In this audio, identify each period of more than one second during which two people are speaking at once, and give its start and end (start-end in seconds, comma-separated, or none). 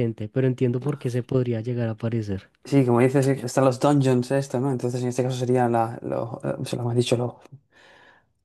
none